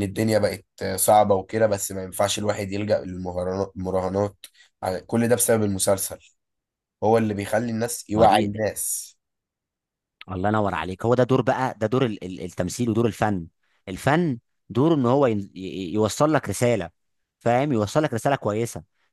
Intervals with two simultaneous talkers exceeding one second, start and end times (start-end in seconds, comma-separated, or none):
none